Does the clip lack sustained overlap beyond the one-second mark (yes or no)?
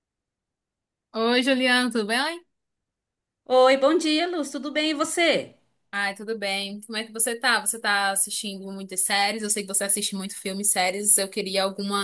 yes